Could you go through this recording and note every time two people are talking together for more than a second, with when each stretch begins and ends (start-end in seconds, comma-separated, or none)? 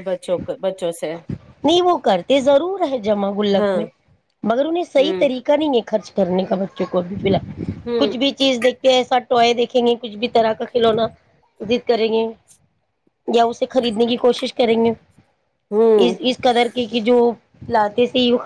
none